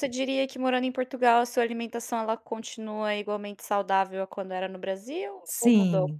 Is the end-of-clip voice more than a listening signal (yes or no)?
yes